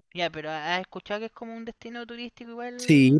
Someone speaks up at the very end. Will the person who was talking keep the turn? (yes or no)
no